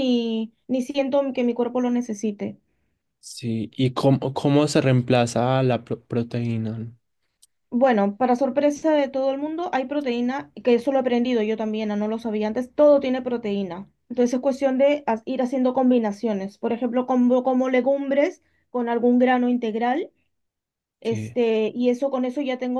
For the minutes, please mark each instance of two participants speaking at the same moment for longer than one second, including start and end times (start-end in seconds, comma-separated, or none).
none